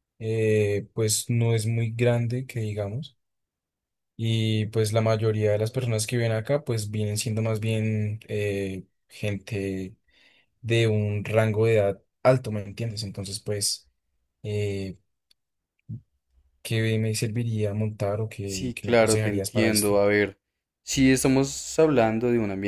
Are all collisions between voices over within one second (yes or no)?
no